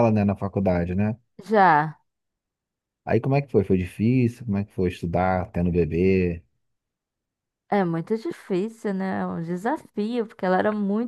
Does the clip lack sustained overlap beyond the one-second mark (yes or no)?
yes